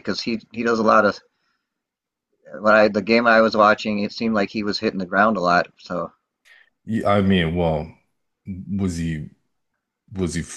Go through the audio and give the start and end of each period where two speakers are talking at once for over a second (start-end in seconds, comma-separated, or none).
none